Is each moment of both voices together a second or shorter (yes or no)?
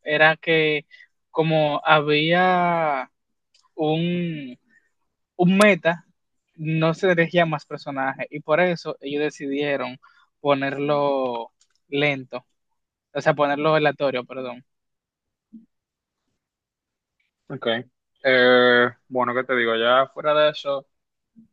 yes